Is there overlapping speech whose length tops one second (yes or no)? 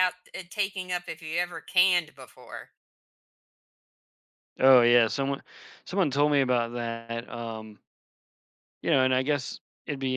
no